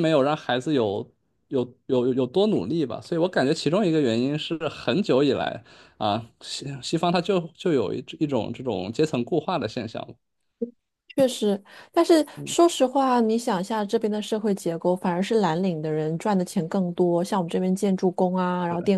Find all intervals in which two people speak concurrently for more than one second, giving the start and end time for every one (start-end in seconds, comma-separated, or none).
none